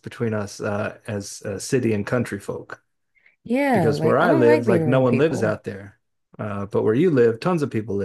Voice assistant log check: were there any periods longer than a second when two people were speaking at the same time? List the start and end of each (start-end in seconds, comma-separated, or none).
3.7-5.6